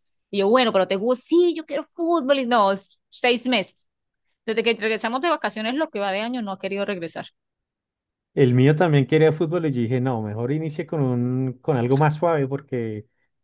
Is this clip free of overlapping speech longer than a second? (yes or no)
yes